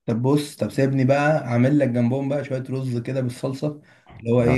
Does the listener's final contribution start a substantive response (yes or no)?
no